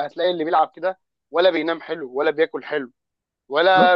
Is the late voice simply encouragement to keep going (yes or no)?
yes